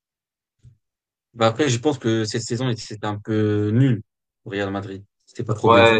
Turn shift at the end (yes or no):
yes